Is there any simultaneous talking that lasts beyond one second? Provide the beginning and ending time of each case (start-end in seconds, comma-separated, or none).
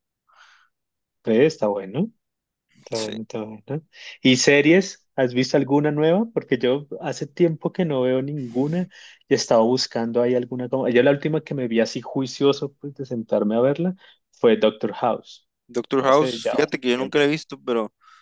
16.0-17.3